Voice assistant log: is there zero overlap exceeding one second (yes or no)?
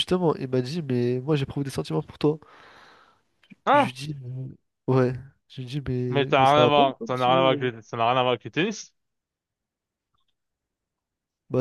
no